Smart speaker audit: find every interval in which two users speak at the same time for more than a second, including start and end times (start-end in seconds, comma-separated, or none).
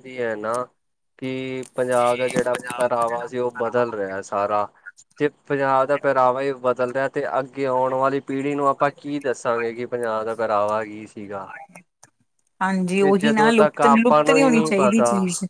13.0-15.0